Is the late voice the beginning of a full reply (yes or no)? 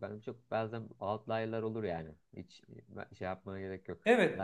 yes